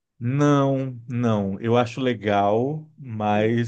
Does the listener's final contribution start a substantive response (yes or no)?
no